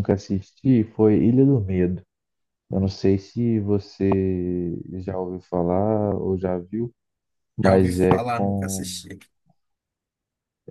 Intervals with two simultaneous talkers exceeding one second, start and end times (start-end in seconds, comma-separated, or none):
7.6-8.9